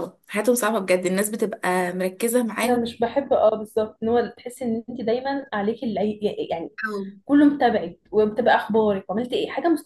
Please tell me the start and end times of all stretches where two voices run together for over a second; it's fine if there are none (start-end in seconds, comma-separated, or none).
none